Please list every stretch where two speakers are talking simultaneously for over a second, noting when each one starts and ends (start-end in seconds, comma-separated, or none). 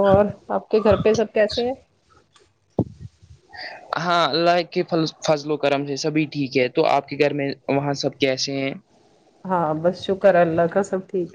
none